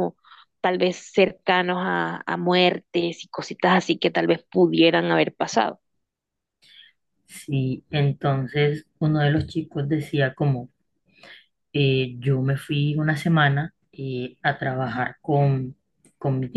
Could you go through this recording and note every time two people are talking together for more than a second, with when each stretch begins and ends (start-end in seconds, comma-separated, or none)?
none